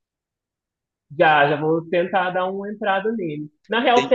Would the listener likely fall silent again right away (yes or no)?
yes